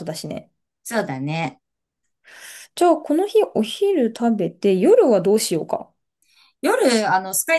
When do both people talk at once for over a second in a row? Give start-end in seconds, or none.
none